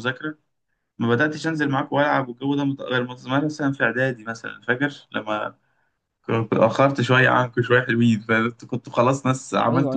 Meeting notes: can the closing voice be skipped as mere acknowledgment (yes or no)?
no